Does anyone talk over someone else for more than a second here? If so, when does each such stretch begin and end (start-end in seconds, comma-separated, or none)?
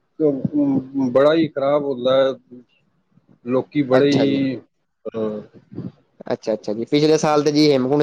none